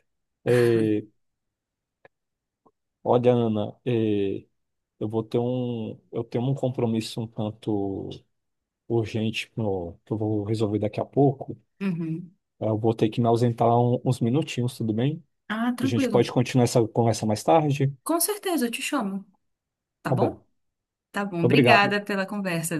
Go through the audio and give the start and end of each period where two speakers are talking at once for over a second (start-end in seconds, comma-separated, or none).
none